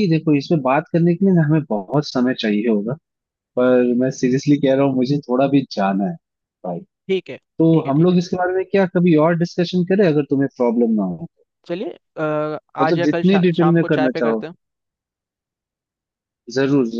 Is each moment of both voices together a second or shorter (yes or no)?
no